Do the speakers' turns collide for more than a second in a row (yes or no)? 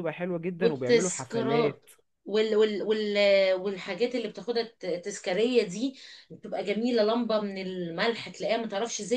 yes